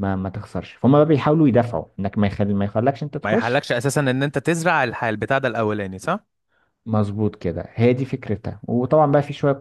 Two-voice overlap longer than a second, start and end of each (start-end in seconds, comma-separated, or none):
none